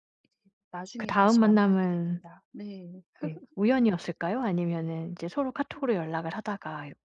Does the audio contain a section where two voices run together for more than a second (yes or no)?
yes